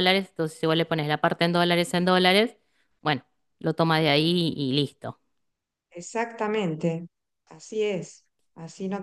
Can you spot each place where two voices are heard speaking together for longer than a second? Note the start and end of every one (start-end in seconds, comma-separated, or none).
none